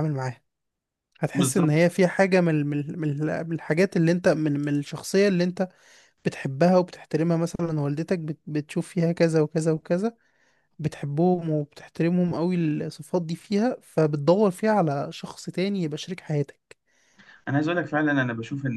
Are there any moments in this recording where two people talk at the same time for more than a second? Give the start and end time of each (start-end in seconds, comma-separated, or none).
none